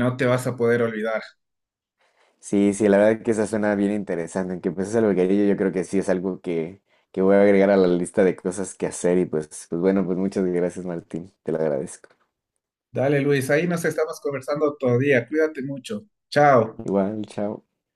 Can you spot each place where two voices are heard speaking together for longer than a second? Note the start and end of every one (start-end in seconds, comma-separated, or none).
none